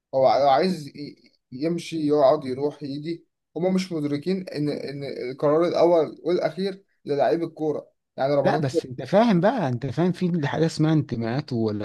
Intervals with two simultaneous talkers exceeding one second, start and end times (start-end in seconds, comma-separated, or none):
none